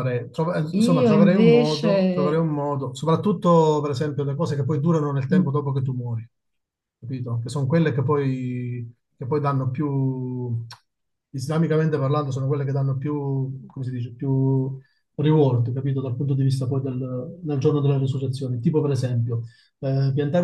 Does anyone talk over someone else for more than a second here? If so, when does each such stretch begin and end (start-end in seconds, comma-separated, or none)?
0.8-2.4